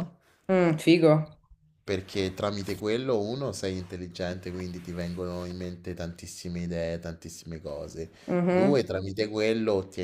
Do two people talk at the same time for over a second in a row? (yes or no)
no